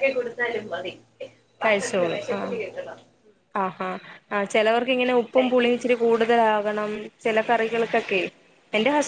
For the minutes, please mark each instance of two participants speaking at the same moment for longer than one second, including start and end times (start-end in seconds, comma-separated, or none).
none